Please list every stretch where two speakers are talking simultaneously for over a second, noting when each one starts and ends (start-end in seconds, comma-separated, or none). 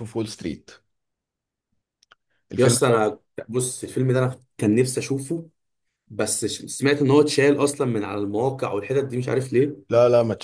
none